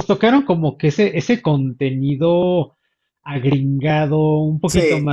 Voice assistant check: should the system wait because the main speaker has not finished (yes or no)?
yes